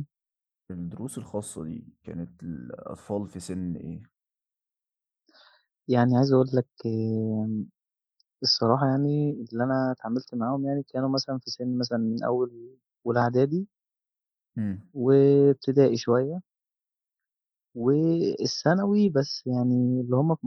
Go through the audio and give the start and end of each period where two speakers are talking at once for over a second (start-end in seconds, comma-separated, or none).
none